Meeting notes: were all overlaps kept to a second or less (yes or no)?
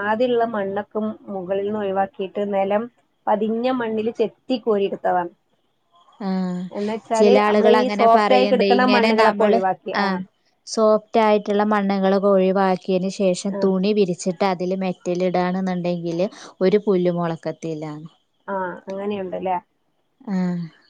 no